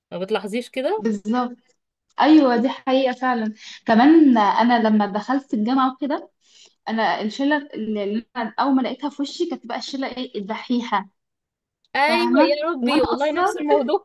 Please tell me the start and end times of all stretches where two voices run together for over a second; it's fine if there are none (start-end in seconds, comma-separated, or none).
12.1-13.5